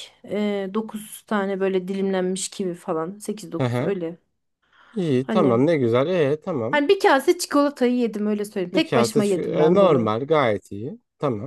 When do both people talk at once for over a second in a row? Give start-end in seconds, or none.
8.7-10.1